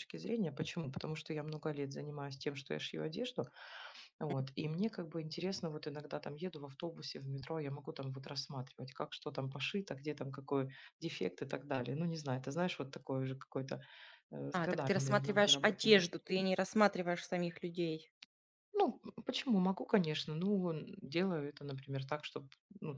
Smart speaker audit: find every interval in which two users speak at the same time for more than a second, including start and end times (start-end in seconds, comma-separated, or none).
14.5-16.0